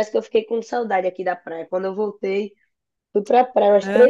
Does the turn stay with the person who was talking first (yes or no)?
yes